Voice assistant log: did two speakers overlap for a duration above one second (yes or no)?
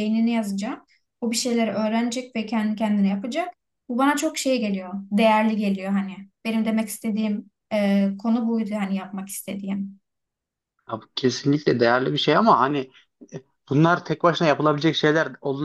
no